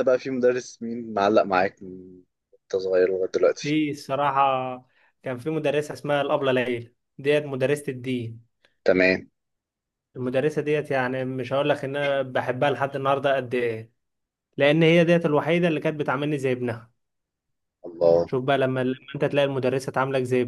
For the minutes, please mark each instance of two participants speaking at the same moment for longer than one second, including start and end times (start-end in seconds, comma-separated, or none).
none